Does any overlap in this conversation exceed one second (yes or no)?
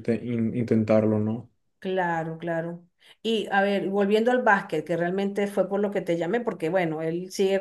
no